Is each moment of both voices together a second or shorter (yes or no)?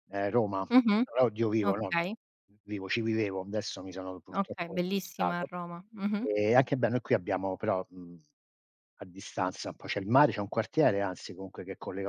no